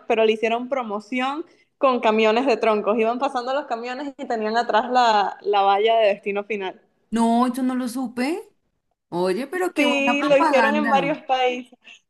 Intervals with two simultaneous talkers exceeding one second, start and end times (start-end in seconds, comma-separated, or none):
9.8-11.1